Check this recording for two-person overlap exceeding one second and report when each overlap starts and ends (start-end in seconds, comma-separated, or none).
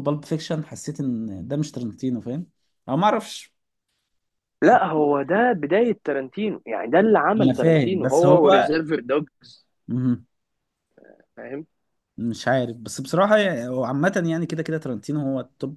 7.4-8.8